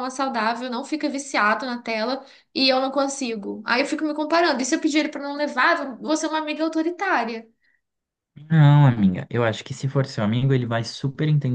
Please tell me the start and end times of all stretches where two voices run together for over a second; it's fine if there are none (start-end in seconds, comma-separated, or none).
none